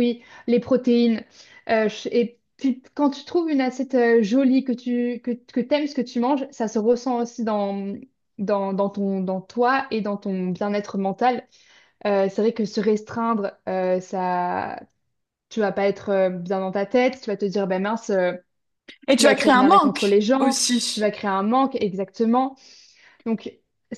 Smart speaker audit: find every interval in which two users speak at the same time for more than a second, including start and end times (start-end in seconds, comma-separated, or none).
19.1-21.1